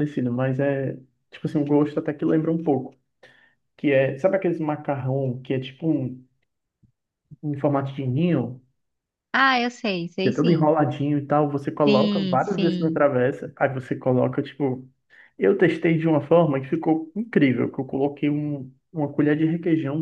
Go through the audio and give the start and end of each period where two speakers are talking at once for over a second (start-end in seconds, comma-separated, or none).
11.8-13.1